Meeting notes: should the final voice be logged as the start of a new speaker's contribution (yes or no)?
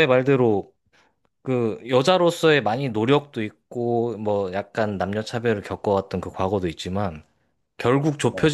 no